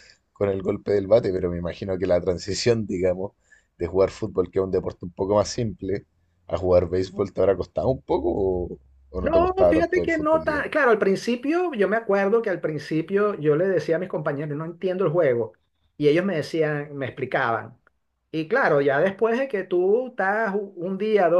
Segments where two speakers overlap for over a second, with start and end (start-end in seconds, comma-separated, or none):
9.2-10.7